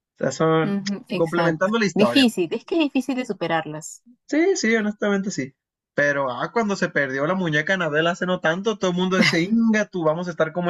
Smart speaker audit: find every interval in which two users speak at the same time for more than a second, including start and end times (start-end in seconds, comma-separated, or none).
0.6-2.3